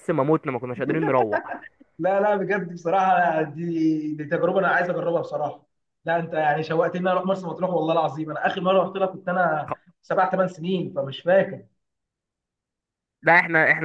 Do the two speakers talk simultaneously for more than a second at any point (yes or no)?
no